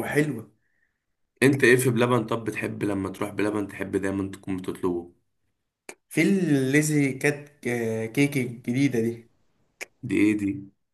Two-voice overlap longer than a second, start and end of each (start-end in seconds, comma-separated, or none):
none